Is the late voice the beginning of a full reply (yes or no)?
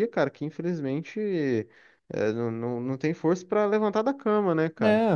no